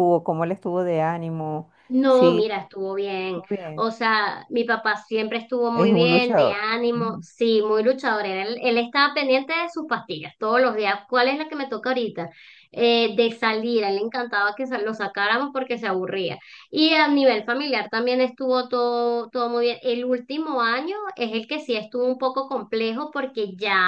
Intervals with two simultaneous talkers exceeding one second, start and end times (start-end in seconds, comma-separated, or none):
5.8-7.2